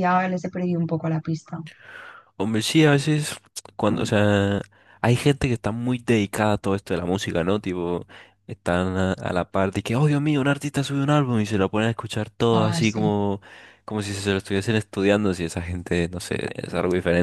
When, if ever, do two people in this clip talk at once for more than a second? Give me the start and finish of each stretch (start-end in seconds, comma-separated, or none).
none